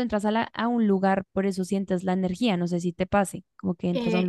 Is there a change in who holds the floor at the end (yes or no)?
yes